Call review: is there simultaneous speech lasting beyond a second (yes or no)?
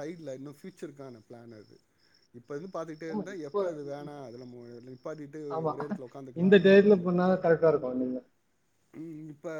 no